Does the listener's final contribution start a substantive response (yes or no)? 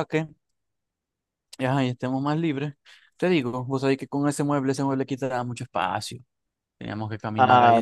no